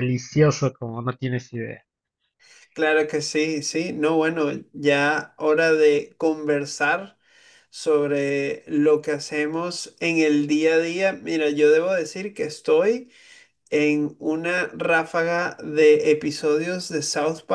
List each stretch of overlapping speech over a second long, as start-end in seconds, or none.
none